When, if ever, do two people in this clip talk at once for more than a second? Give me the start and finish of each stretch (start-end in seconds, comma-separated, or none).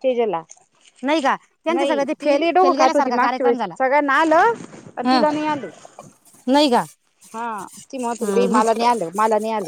1.8-3.7